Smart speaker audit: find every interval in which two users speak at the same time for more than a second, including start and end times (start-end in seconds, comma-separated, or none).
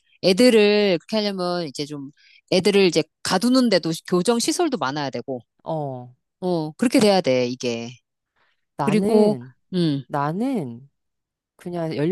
none